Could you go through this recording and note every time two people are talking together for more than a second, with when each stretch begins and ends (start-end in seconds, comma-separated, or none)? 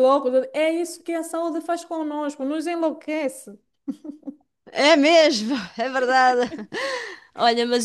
none